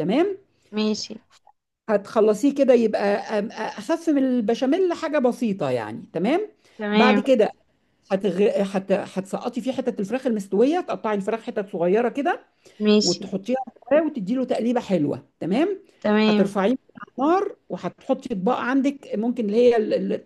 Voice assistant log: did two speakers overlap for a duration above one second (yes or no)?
no